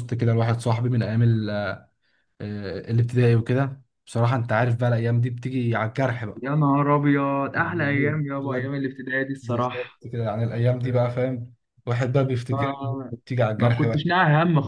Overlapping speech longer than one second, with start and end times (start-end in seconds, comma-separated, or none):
7.5-8.7